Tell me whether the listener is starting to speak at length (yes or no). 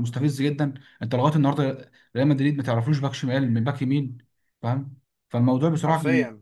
no